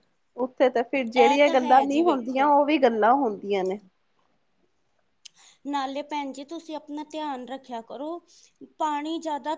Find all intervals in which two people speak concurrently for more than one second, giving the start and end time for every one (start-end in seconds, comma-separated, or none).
1.0-2.5